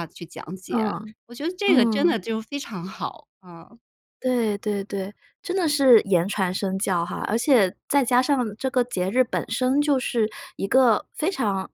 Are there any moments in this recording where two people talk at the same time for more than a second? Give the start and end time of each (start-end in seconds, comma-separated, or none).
none